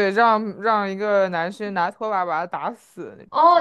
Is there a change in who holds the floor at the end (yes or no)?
yes